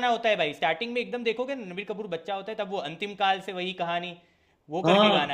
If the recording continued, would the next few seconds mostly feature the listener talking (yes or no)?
yes